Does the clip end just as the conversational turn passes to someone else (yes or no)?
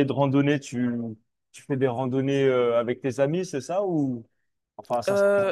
yes